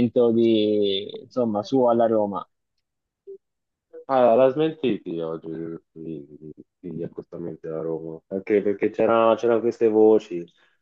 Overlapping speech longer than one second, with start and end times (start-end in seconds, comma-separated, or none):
none